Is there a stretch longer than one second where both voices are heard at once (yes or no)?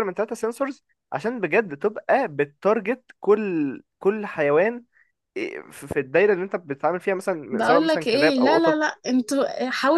yes